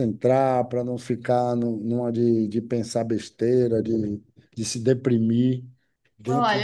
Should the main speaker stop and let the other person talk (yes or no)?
yes